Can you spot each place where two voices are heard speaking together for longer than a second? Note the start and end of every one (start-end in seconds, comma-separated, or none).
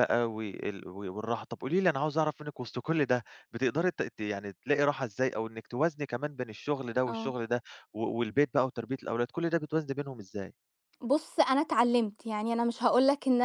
none